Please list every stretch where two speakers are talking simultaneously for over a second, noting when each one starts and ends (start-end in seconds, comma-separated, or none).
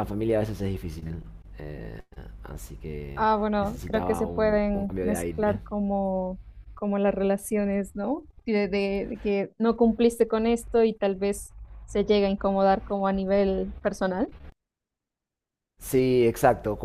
3.2-5.6